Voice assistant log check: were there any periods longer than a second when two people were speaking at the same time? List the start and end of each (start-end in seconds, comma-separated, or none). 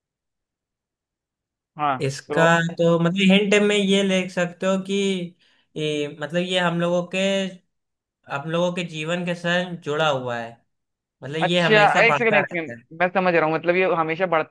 11.4-12.8